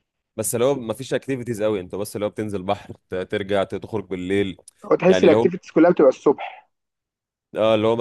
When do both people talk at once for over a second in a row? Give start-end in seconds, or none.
none